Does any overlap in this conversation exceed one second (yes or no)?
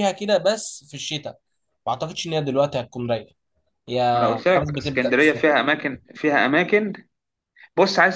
yes